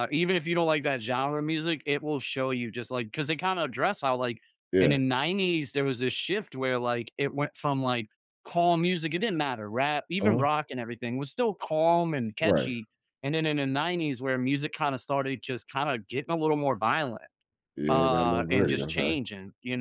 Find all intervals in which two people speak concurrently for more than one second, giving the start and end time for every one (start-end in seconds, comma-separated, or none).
17.9-19.2